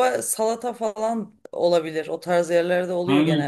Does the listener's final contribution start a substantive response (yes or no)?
yes